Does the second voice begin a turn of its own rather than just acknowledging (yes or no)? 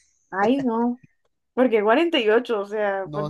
yes